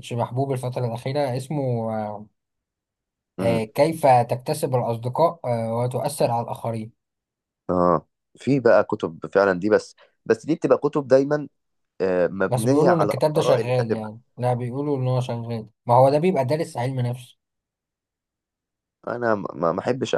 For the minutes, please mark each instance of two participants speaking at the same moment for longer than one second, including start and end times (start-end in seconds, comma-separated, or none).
12.5-14.1